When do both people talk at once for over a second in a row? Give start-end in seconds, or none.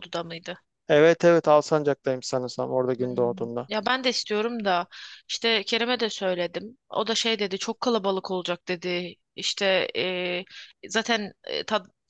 none